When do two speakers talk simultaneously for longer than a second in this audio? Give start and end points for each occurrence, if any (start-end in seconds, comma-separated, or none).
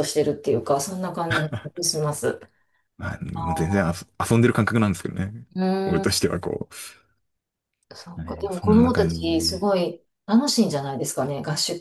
8.2-9.7